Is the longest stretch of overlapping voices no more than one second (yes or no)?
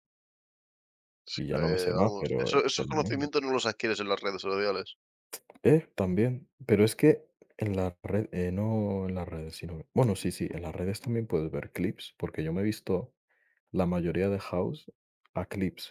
no